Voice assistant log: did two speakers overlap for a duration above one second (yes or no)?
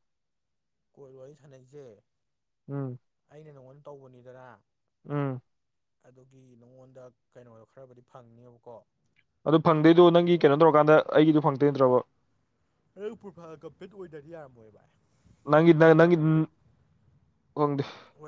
no